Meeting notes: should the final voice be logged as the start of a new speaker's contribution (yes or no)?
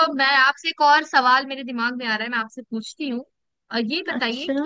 no